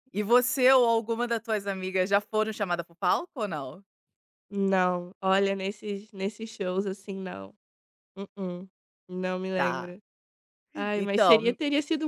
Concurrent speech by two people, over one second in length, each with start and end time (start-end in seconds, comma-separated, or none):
none